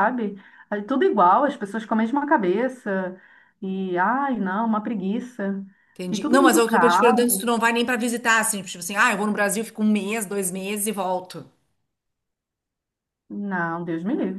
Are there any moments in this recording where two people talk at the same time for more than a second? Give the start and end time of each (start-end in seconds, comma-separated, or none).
6.1-7.5